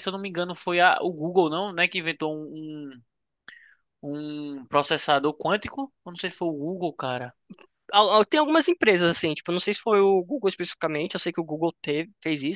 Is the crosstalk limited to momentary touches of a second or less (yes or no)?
yes